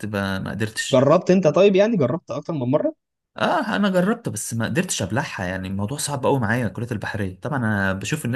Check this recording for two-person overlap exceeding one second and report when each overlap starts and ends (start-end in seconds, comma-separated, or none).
none